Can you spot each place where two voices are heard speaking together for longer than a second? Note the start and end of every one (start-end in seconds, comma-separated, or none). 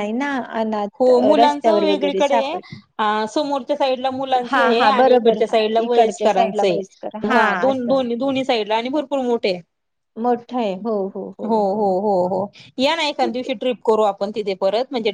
1.0-2.6, 4.5-6.8